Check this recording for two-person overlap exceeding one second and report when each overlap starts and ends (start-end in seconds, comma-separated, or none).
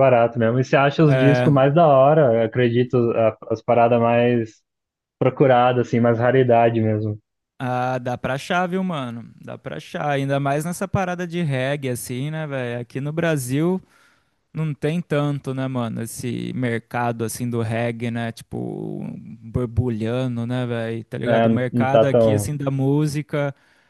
21.3-22.5